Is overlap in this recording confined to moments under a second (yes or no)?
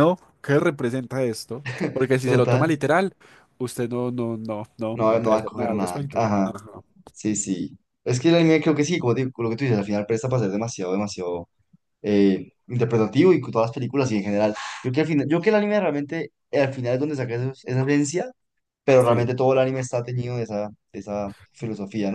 no